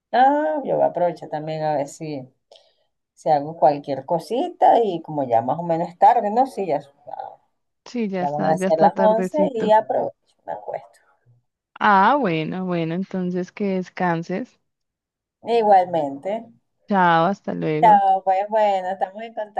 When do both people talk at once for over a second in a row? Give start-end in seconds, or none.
8.2-9.7